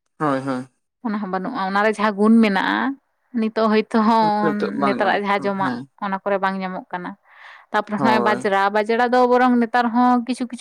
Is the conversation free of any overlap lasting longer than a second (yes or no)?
no